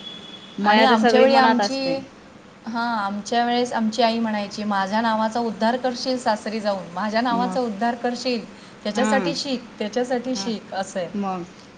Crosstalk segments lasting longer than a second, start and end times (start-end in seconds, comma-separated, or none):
0.7-1.9